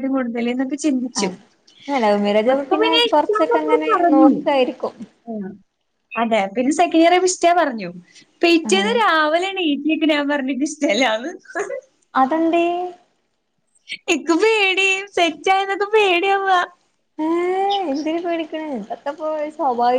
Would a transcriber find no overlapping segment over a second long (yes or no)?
no